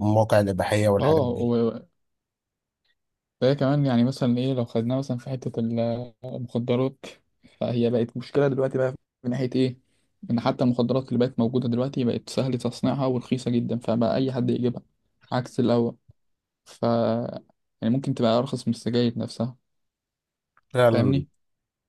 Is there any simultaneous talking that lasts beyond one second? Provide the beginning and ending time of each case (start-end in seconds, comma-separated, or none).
none